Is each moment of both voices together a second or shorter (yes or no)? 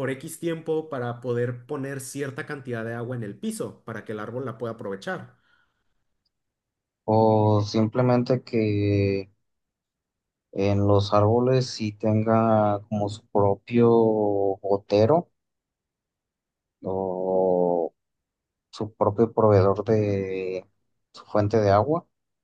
yes